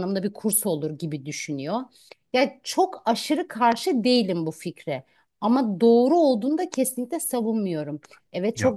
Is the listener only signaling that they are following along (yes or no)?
yes